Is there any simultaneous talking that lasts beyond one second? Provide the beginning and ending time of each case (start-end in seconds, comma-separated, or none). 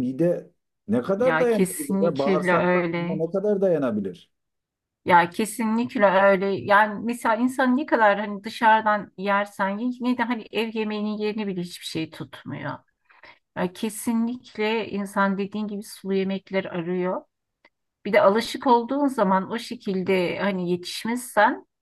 1.2-3.2